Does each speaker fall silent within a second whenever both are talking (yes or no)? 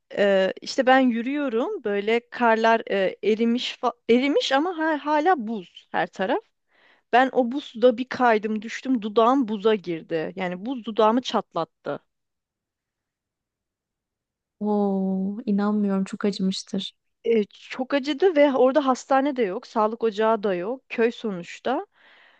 yes